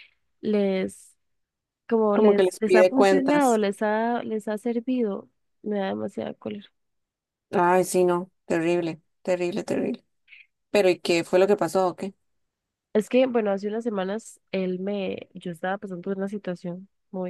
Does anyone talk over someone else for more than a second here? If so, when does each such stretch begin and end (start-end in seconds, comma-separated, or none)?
2.1-3.6